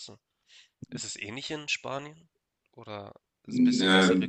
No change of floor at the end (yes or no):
no